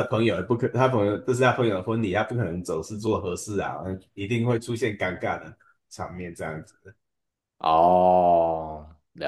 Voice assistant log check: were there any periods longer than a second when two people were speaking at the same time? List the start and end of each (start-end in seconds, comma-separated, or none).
none